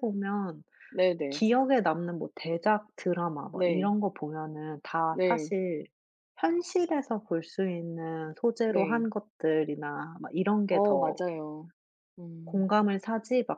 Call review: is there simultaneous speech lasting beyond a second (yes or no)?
no